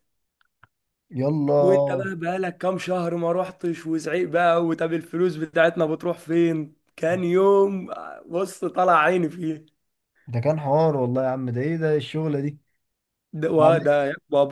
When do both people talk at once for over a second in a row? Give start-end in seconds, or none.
none